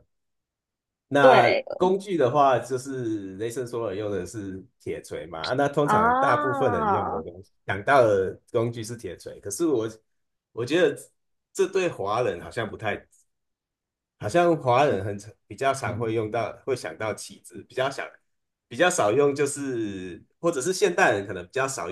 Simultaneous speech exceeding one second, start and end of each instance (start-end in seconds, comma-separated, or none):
5.8-7.2